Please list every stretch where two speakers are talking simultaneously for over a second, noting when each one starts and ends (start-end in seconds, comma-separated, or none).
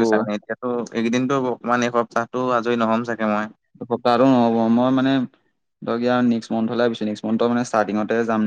none